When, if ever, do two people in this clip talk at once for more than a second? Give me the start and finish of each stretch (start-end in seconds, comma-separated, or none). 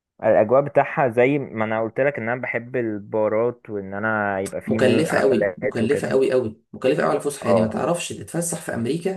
4.7-6.2